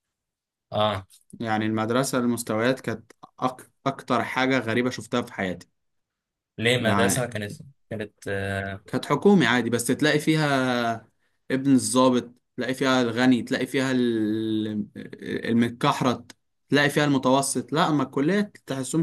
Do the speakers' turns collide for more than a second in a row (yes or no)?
no